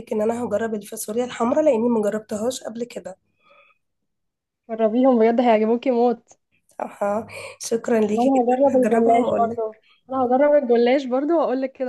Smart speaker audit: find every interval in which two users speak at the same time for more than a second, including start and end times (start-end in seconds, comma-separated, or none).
8.1-9.6